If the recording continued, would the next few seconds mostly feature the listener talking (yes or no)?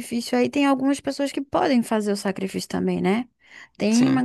no